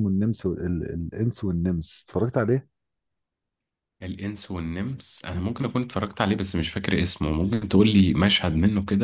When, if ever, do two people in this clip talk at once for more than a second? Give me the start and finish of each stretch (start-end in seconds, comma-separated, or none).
none